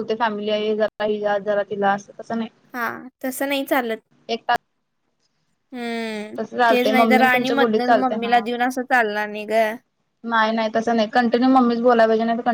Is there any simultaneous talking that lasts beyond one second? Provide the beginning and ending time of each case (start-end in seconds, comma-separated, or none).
6.4-8.4